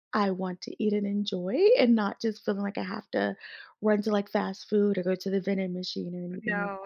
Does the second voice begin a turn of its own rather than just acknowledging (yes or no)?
yes